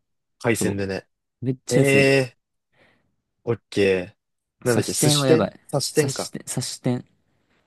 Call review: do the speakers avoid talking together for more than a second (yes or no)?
no